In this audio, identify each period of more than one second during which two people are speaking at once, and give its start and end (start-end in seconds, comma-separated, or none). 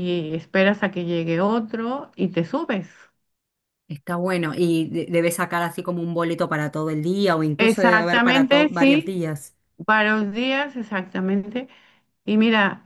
7.6-9.2